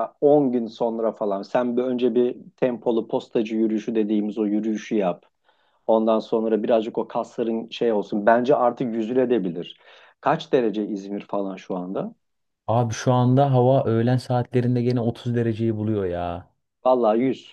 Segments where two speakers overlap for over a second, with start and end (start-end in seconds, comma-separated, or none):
none